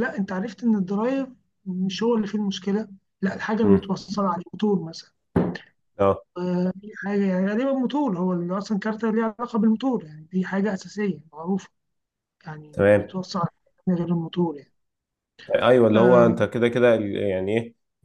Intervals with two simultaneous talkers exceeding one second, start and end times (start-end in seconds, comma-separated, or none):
none